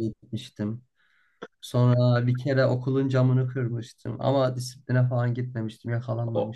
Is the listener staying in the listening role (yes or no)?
no